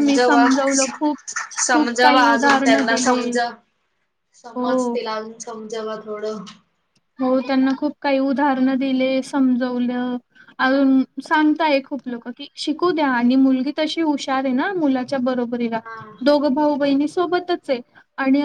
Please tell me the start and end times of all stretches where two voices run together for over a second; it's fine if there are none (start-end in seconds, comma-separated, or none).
1.7-3.3